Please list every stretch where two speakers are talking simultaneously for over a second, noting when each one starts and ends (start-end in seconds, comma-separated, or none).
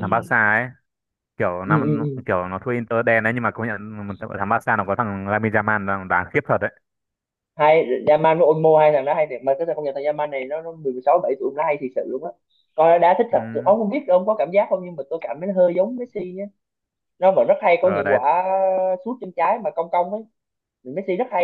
none